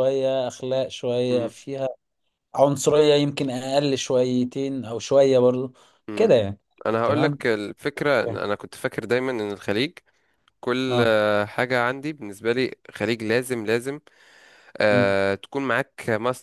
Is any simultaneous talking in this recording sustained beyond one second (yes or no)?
no